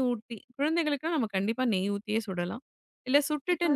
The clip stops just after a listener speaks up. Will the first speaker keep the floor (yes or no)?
yes